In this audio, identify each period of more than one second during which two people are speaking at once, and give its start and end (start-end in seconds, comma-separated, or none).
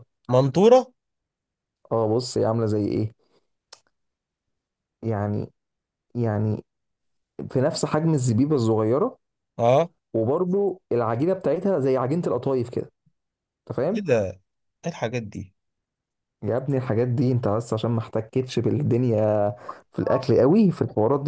none